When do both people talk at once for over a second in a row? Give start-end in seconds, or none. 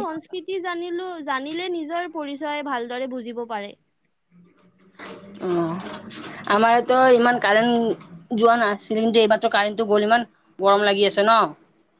none